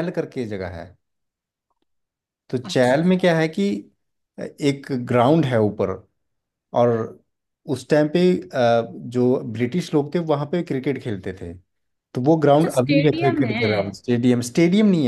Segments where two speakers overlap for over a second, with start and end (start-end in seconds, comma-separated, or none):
12.5-13.9